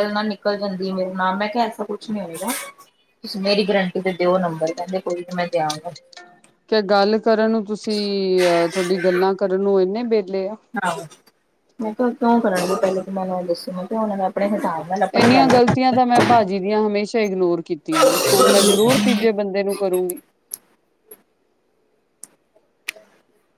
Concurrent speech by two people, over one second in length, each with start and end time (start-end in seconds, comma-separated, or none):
none